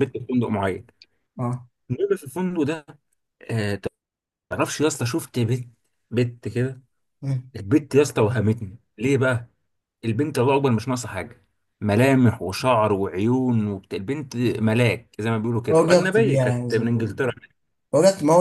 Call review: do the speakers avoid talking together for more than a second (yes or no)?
no